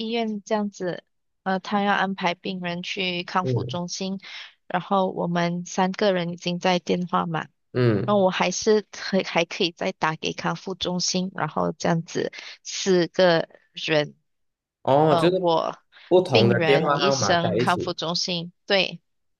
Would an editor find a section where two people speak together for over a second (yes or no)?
yes